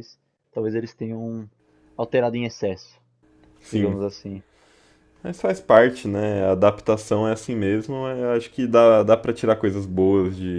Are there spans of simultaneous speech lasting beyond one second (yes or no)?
no